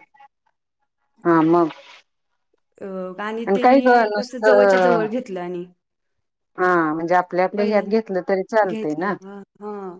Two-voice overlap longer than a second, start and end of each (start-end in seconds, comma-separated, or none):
3.6-5.0